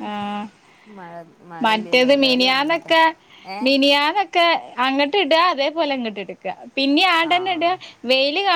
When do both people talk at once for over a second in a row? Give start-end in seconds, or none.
1.6-2.9